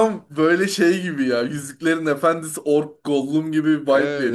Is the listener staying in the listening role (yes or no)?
no